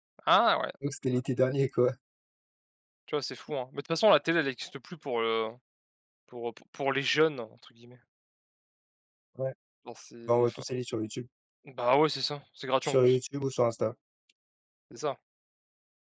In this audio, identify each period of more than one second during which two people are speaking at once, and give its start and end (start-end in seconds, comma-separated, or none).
none